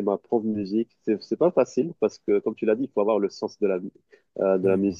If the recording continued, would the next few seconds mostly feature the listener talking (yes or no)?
no